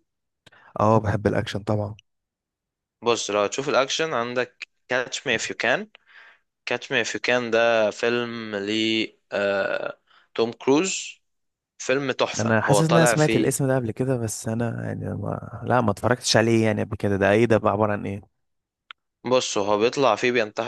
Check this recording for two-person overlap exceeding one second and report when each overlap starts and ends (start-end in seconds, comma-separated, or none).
12.4-13.6